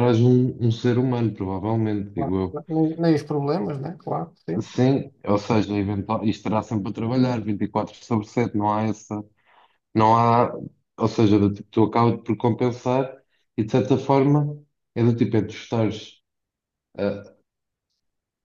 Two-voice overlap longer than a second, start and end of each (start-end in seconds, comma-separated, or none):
none